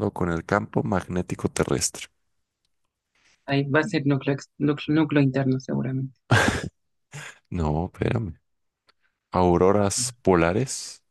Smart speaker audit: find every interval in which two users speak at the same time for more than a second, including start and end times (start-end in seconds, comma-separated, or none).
none